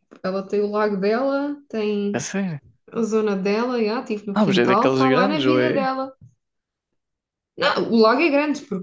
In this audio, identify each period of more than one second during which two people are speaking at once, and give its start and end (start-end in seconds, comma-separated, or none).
4.3-5.9